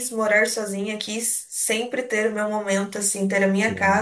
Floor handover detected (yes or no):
no